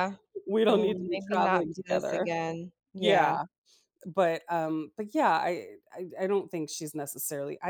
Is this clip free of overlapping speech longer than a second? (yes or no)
no